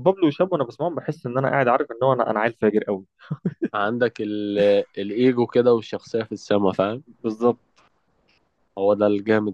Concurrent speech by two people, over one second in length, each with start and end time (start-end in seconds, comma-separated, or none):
none